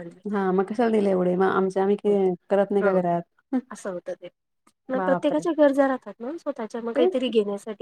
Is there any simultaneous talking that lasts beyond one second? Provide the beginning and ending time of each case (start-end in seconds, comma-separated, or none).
none